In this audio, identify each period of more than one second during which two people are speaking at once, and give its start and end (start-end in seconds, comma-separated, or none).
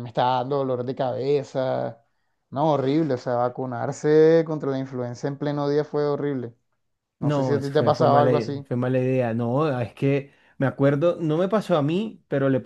7.2-8.6